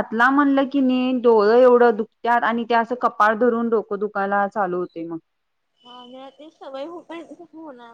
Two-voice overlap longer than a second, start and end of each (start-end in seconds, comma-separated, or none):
none